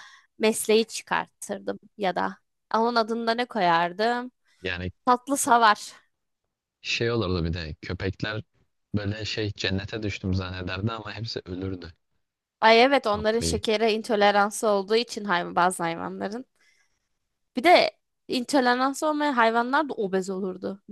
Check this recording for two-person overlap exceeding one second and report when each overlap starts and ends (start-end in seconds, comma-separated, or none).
none